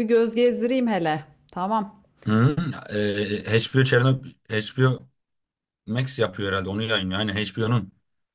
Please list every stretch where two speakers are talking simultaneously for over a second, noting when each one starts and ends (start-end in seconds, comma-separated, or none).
none